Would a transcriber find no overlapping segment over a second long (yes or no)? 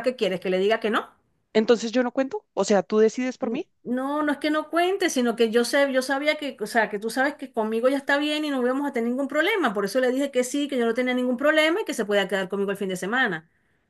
yes